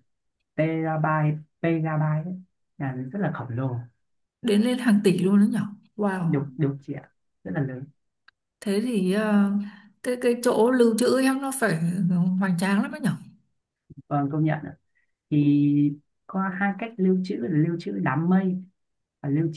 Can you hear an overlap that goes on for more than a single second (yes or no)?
no